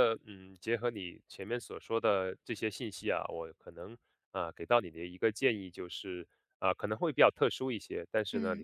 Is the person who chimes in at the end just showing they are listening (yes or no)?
yes